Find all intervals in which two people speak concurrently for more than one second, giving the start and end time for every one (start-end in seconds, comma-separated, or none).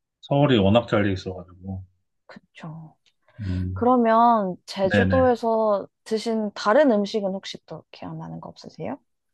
none